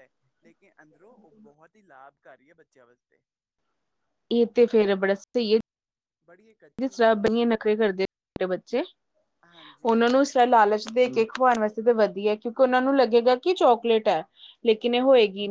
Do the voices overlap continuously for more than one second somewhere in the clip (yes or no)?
yes